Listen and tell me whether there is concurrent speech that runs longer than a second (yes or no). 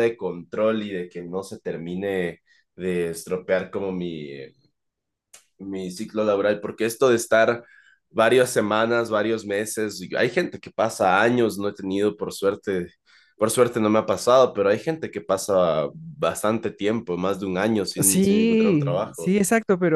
yes